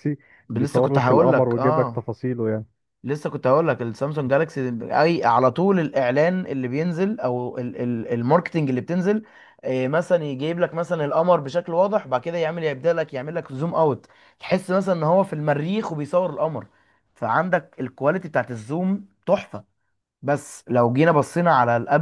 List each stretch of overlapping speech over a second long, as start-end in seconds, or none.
0.6-2.0